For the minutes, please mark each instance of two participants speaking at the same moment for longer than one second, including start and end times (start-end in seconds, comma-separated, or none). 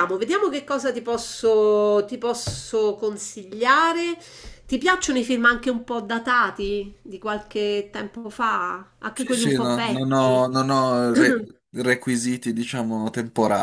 9.1-10.4